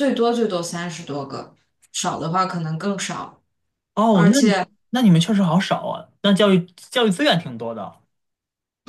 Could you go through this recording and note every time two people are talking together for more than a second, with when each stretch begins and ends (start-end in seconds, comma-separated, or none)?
none